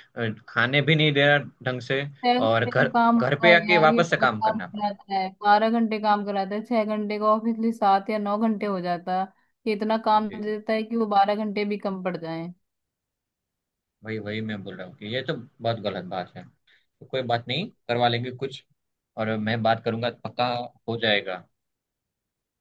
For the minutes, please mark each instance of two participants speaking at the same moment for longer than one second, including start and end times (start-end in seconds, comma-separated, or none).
2.5-4.8